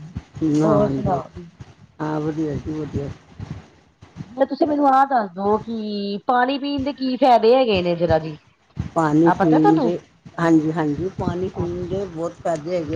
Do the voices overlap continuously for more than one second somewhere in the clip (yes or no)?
no